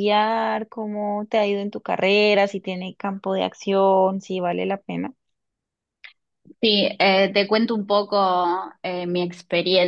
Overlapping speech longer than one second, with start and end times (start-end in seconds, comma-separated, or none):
none